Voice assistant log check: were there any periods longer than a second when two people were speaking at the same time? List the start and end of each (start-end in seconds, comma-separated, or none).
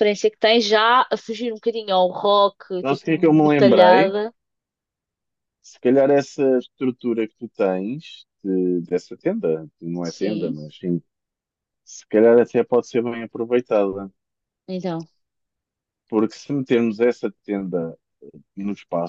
2.8-4.1